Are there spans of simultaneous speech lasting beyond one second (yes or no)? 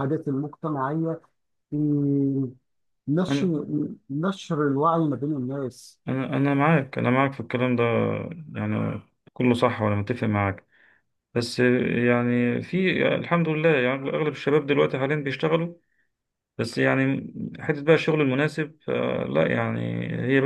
no